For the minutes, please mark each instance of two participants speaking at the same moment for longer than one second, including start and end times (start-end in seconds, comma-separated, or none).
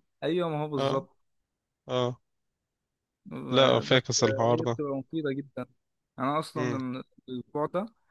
3.5-4.8